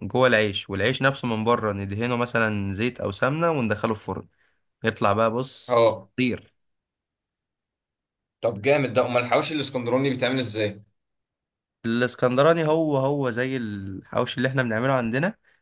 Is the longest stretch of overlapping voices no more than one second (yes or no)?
yes